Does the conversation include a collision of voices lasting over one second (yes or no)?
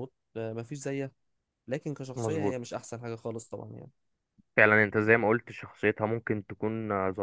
no